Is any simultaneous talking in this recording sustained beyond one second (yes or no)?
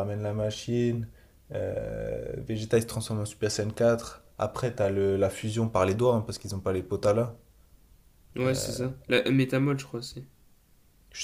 no